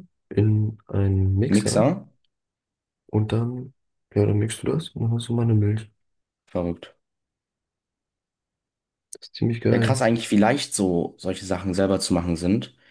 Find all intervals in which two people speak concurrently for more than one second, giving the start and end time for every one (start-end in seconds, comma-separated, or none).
none